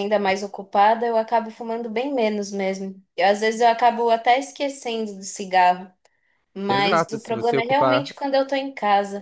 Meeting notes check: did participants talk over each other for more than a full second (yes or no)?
yes